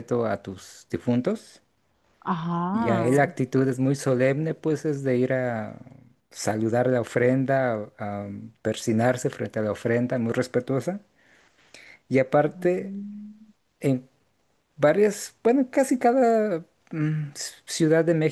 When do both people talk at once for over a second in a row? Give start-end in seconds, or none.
none